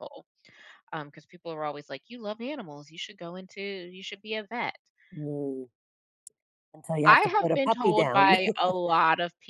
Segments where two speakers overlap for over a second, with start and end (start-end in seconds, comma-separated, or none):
7.0-8.3